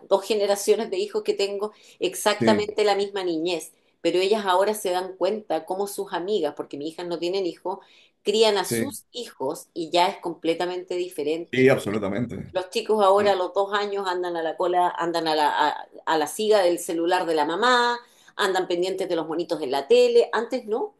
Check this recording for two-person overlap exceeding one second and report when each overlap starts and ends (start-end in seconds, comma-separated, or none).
none